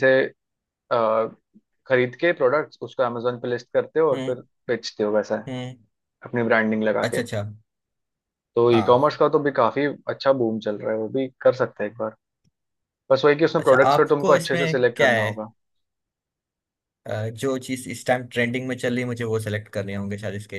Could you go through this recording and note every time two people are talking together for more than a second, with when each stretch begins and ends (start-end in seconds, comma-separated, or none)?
13.6-15.3